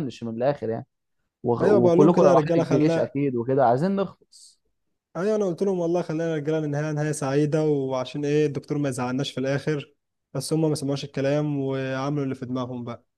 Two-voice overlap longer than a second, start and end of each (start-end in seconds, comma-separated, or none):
1.6-3.2